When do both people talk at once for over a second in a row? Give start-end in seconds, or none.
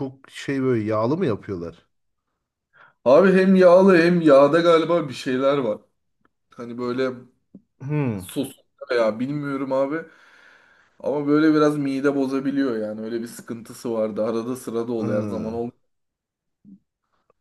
none